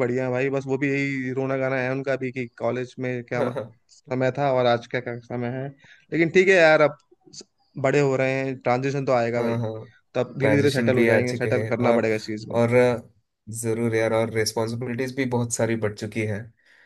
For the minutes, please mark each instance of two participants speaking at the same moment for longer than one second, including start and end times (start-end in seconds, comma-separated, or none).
10.4-12.1